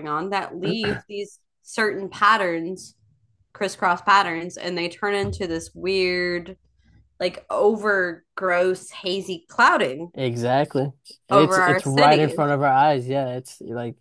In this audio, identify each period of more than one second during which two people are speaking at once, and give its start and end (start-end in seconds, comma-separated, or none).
11.3-12.6